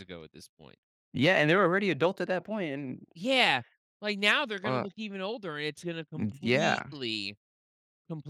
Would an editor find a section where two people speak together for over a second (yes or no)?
no